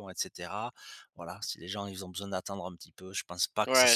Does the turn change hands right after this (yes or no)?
yes